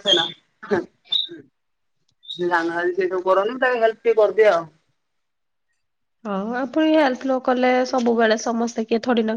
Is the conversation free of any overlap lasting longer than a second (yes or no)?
yes